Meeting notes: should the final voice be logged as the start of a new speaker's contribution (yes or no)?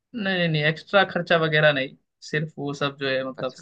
yes